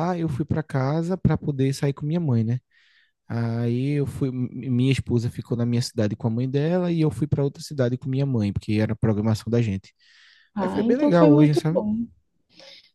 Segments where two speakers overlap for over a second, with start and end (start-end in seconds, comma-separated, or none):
10.6-11.8